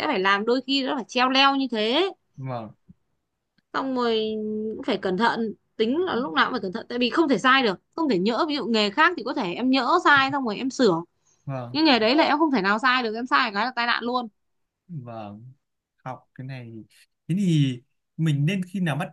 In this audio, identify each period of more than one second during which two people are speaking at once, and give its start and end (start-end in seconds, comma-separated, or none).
none